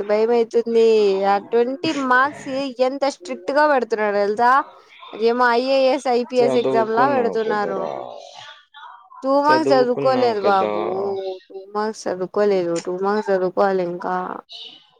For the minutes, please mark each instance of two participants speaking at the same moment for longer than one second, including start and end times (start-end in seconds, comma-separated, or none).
6.4-7.8, 9.5-10.7